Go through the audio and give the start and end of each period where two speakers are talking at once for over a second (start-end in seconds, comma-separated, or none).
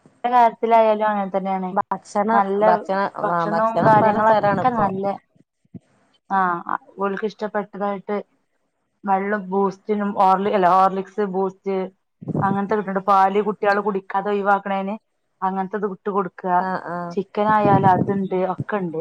3.2-4.8